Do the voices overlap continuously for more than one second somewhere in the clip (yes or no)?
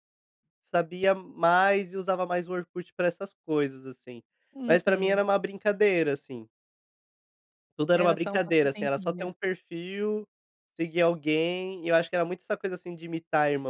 yes